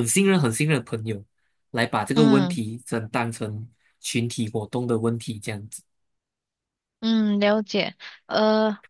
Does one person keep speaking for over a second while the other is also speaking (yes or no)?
no